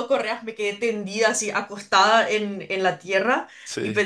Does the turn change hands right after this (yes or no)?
no